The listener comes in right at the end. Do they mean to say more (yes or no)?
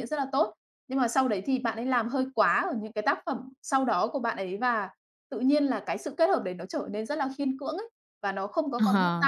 yes